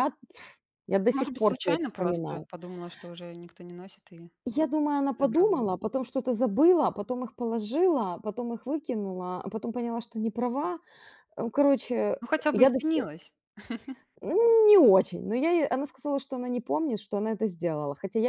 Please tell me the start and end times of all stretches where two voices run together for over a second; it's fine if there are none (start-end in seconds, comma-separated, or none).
1.1-2.5